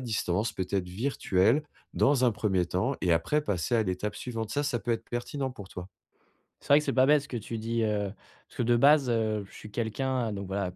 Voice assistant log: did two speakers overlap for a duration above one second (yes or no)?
no